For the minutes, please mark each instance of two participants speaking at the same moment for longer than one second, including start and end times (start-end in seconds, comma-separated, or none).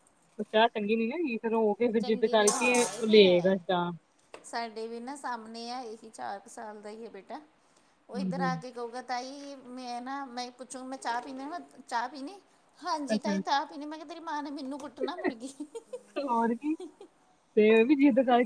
2.0-3.6